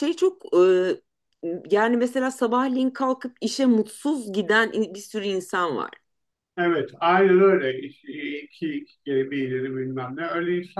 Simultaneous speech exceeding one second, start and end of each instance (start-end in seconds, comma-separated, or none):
none